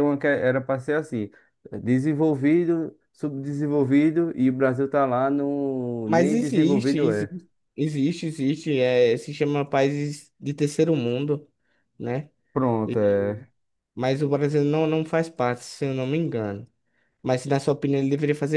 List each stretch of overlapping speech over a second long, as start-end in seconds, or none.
6.0-7.3